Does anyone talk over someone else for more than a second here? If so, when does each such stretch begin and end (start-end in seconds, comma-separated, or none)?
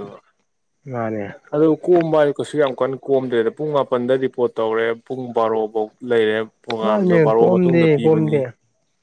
6.8-8.4